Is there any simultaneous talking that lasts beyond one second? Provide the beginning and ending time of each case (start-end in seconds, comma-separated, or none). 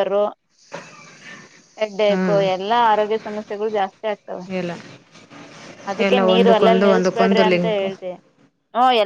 6.0-7.9